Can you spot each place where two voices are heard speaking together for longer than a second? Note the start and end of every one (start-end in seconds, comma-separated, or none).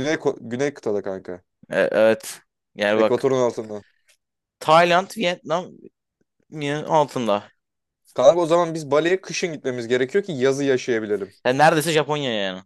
none